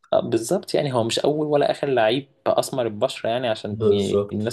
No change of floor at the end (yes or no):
yes